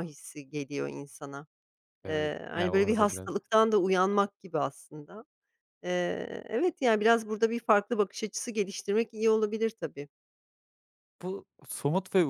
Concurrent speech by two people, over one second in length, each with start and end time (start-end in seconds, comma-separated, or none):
2.1-3.3